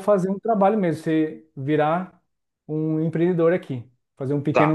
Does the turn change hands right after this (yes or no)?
yes